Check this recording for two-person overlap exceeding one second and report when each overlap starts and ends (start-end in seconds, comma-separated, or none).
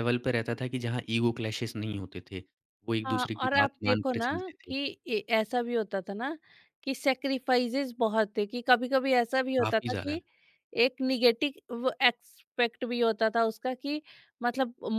3.0-4.7